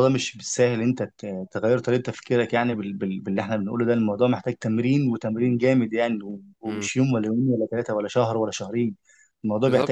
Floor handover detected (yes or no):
yes